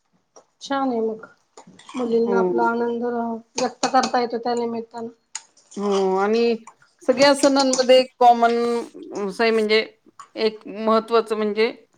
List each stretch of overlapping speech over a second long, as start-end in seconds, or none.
none